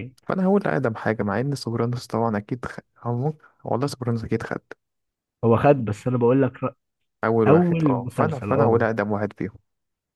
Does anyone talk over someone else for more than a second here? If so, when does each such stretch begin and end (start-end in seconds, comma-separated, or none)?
7.5-8.8